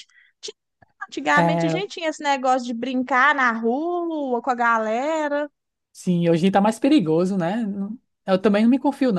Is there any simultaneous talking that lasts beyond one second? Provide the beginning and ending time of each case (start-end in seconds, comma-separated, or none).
none